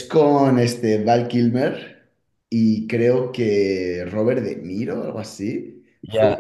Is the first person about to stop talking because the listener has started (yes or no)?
yes